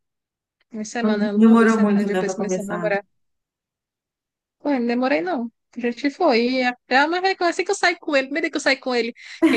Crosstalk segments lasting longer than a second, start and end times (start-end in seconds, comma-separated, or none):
1.0-2.9